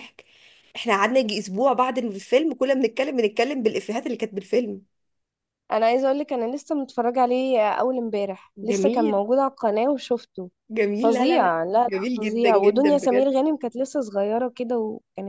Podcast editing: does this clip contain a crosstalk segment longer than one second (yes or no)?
yes